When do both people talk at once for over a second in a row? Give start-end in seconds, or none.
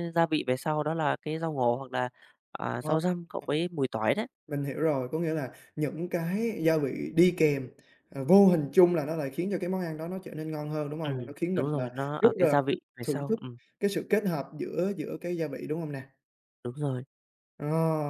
11.0-13.4